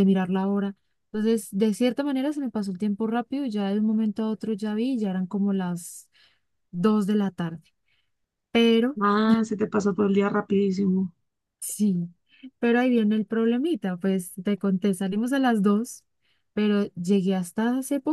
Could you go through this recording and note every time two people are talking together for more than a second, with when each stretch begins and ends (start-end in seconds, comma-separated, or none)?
none